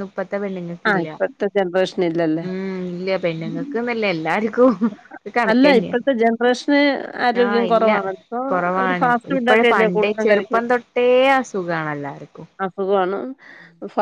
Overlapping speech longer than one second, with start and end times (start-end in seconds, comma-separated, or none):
8.8-10.5